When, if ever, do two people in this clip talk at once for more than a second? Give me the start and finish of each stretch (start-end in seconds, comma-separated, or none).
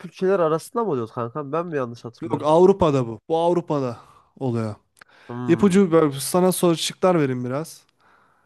none